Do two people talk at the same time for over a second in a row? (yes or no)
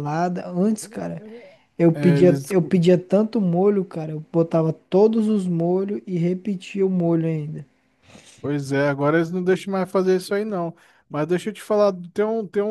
no